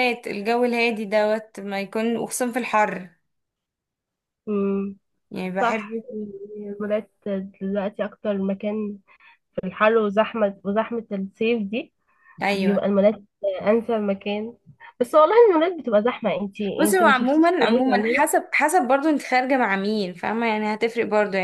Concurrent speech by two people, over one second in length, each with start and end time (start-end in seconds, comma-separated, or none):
16.8-18.2